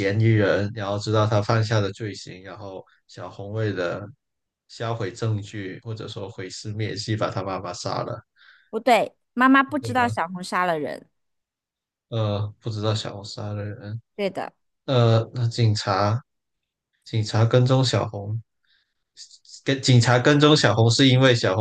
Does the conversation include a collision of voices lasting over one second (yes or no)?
no